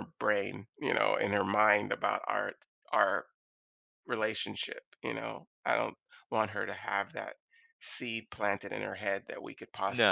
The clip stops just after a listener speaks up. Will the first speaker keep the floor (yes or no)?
no